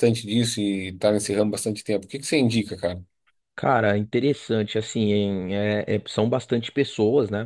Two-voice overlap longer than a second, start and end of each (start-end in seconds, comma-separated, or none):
none